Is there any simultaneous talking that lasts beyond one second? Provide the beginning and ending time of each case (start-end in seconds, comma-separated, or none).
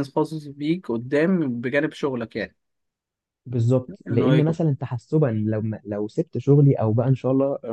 none